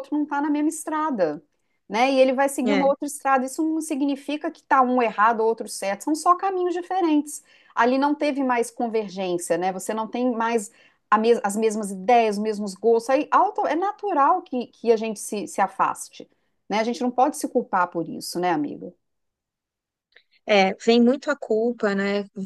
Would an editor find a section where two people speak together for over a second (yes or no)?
no